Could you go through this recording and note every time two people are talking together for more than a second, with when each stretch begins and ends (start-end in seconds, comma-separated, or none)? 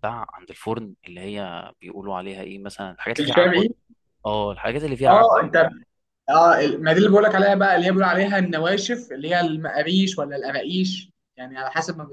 none